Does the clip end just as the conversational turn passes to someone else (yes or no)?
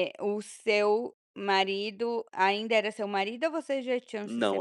yes